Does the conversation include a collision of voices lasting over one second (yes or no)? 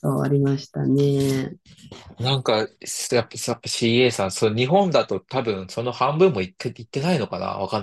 no